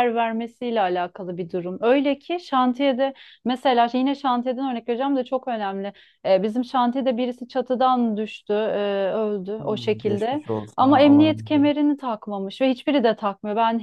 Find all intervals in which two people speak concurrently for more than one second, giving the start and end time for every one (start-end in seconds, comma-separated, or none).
9.6-11.7